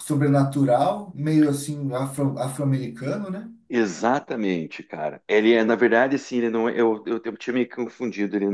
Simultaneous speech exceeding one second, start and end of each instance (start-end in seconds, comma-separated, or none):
none